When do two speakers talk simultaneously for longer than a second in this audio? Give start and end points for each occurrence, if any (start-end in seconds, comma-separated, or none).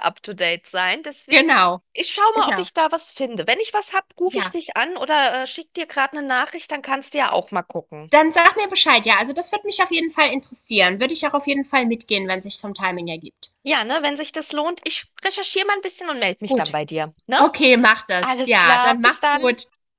18.2-19.4